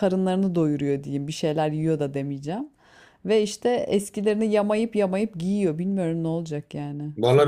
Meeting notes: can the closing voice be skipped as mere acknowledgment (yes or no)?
no